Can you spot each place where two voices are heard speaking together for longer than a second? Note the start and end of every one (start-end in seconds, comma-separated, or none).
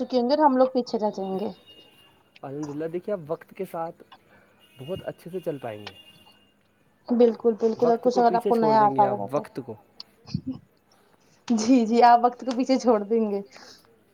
7.8-9.4